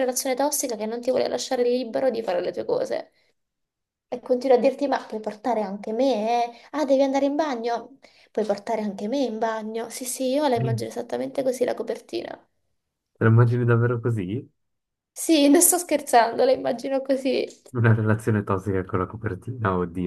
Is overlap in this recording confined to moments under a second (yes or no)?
yes